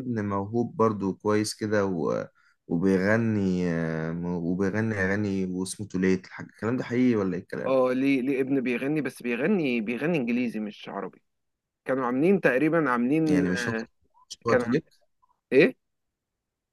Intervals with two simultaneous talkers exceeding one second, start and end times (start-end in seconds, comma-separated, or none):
none